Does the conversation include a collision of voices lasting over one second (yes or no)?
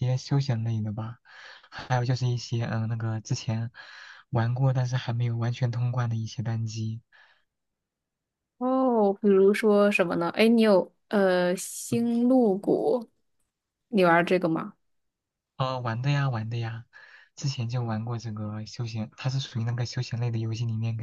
no